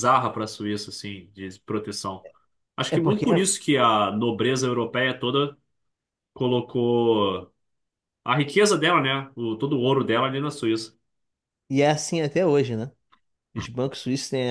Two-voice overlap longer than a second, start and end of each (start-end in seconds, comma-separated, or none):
none